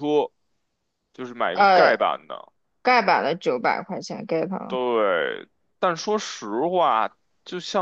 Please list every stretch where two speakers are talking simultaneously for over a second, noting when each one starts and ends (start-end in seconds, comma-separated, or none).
none